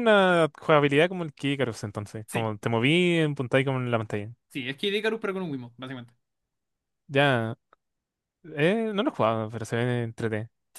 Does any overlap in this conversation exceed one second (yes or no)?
no